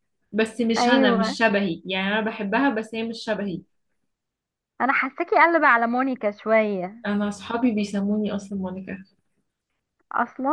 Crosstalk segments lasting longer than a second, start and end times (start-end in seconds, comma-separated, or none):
none